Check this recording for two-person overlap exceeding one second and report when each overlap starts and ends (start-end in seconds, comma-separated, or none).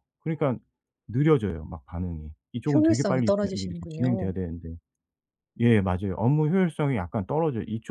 2.7-4.3